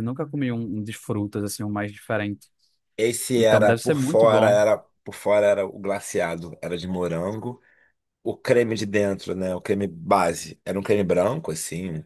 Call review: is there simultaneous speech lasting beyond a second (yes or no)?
yes